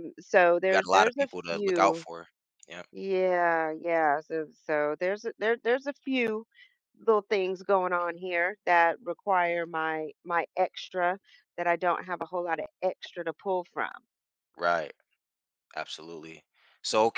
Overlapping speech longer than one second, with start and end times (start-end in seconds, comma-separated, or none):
0.6-2.0